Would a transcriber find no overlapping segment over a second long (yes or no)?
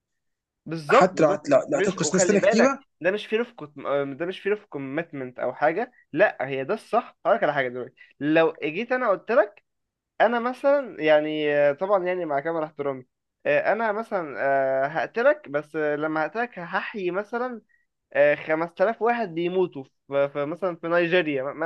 no